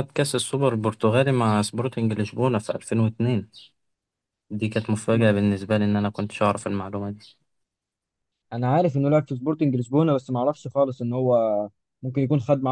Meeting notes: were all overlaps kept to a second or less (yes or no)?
yes